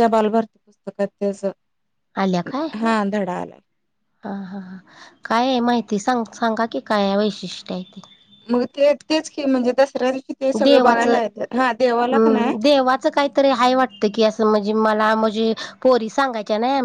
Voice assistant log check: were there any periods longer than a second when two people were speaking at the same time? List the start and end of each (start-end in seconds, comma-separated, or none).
none